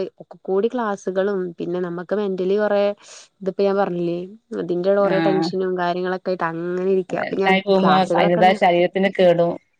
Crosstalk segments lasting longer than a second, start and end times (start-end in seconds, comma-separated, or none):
none